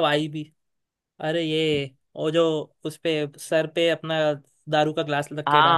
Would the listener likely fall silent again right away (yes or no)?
no